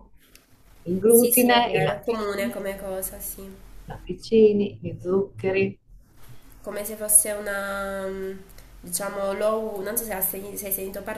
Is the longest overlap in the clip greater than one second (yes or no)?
yes